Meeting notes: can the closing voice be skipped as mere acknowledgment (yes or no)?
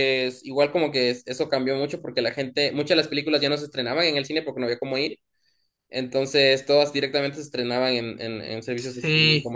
no